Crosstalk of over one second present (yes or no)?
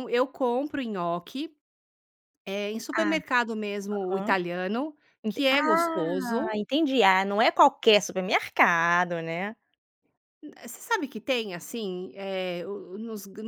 yes